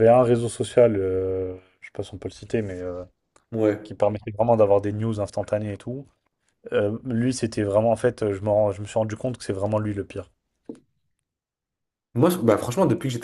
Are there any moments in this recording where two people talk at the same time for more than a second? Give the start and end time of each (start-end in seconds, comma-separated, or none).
none